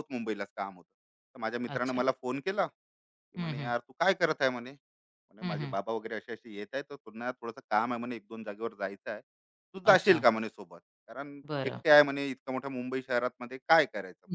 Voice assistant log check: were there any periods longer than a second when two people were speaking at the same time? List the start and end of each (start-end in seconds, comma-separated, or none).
none